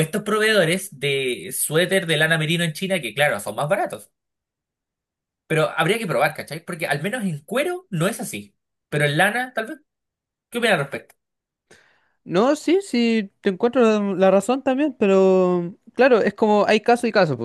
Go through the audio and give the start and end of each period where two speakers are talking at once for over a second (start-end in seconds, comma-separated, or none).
none